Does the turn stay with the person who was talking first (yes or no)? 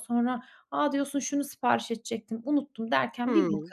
no